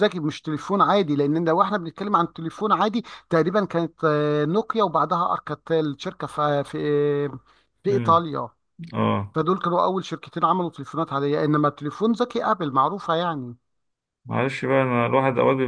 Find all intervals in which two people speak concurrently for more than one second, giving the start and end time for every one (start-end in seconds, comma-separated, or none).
none